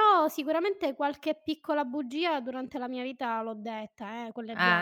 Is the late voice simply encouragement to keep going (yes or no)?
no